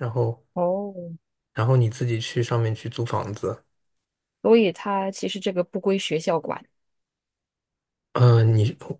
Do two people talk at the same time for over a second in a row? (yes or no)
no